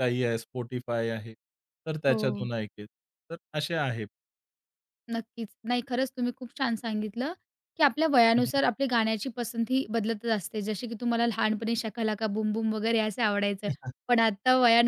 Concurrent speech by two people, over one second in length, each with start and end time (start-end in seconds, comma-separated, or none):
none